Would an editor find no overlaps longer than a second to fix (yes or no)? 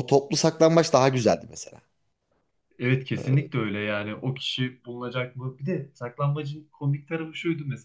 yes